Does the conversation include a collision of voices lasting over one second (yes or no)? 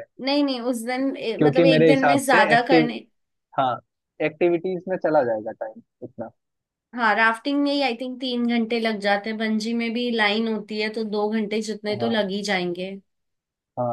yes